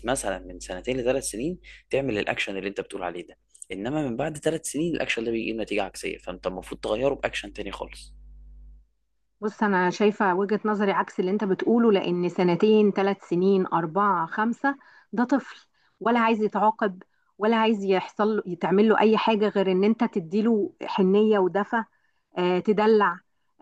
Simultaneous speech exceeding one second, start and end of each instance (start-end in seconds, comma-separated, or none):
none